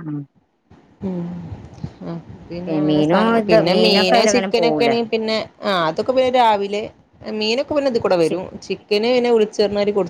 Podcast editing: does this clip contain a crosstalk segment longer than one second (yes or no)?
yes